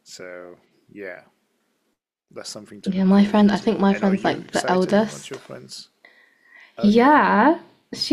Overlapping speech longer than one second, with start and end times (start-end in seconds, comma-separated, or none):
2.9-5.4